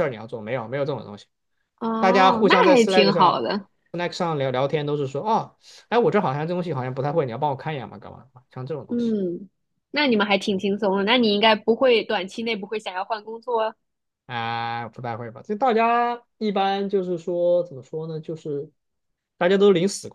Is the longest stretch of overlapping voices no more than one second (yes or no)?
no